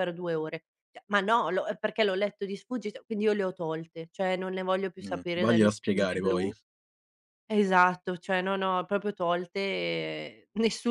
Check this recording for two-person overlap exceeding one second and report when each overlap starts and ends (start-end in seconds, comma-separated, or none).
5.0-6.5